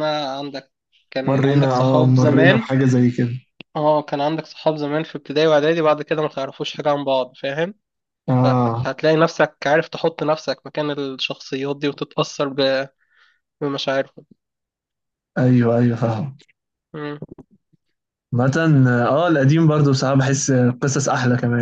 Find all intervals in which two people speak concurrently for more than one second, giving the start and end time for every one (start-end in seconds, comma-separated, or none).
1.3-2.8